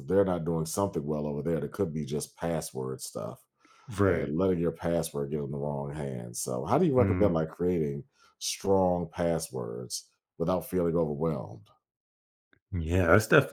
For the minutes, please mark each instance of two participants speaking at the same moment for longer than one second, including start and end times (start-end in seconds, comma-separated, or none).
none